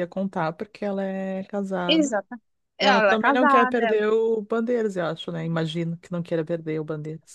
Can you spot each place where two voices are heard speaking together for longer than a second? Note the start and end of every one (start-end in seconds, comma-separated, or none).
2.8-4.0